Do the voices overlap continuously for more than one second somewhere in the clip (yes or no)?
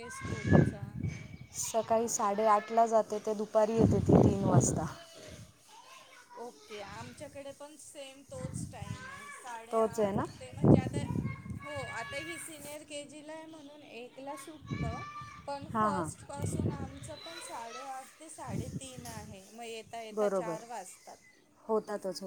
no